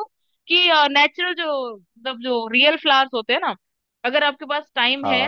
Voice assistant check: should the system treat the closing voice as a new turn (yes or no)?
no